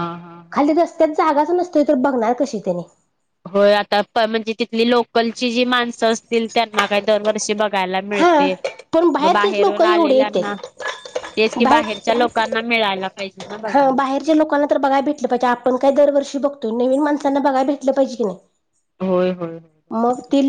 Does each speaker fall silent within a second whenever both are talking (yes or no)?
no